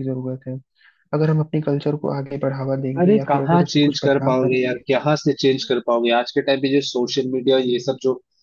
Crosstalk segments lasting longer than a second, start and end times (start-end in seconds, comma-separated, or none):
3.0-4.8